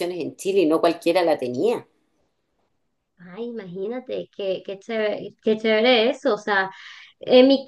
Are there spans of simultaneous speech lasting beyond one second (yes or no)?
no